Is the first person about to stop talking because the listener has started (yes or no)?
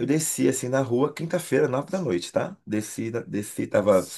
no